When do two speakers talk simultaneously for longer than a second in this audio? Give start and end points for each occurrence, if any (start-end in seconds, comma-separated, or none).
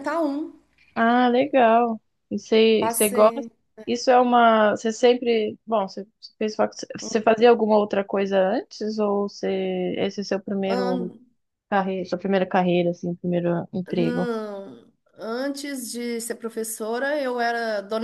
none